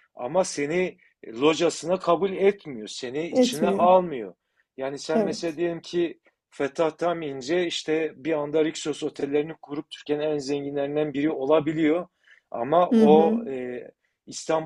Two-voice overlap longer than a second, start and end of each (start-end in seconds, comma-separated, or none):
none